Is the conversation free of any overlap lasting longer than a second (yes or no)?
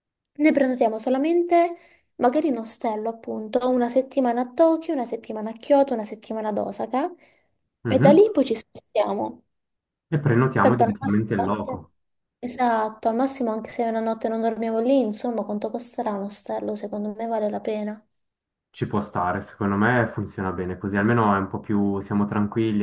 no